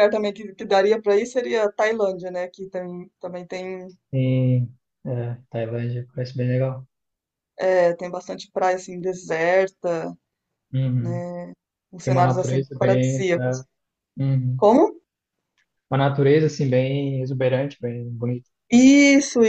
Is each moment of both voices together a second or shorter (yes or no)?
no